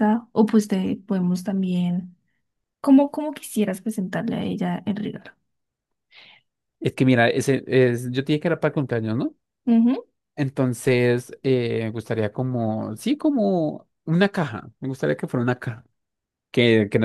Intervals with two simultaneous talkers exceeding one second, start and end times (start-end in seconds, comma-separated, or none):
none